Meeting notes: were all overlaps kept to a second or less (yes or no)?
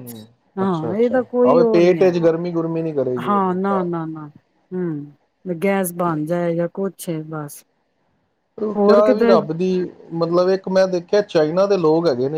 no